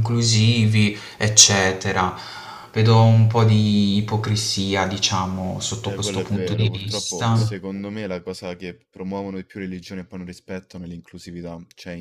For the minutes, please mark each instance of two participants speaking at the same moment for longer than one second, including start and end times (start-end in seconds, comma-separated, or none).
5.8-7.6